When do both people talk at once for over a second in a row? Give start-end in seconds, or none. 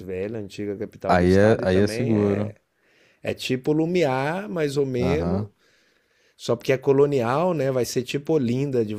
1.1-2.5